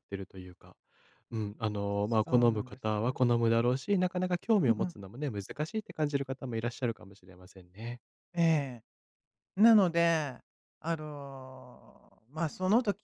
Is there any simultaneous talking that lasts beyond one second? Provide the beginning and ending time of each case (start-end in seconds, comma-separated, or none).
2.0-3.3